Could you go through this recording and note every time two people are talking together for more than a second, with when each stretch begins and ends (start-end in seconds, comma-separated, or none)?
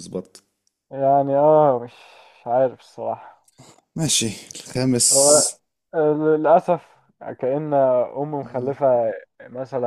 none